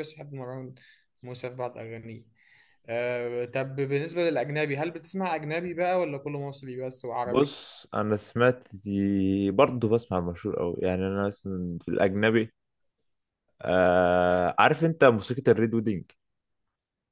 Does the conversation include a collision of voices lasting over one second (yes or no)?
no